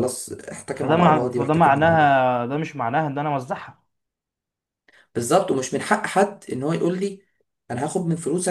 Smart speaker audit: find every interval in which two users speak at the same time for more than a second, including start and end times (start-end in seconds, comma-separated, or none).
0.7-2.3